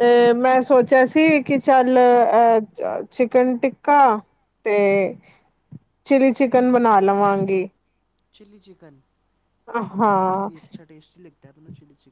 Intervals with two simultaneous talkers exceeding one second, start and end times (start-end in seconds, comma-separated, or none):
none